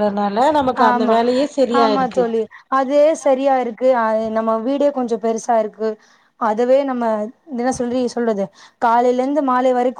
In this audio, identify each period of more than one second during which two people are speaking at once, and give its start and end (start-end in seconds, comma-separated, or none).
none